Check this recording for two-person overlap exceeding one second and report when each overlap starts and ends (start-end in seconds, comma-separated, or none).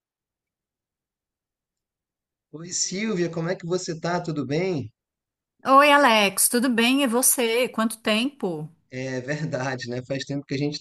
none